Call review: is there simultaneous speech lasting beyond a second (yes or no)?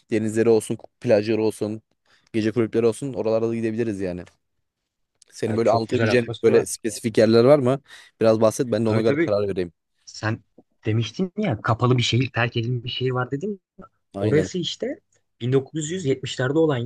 yes